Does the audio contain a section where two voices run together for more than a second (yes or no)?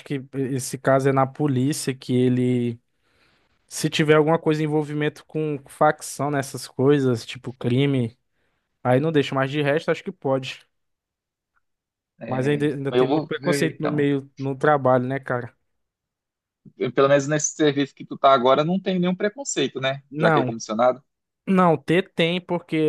yes